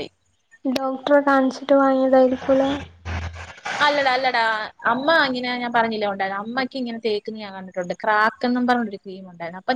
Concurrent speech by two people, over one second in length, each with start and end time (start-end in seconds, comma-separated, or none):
none